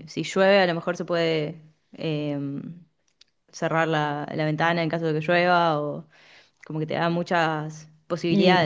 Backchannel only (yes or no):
no